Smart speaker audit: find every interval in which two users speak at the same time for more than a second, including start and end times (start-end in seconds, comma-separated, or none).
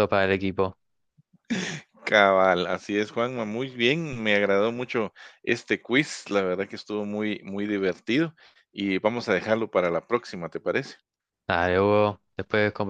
none